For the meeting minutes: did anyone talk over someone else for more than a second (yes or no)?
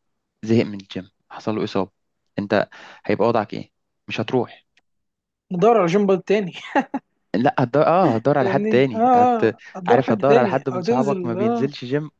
yes